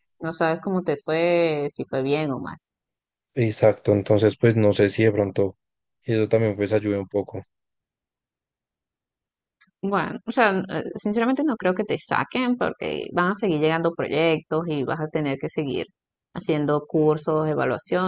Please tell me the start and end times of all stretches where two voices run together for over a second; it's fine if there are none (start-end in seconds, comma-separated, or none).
none